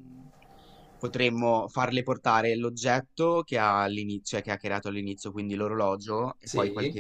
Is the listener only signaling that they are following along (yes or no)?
yes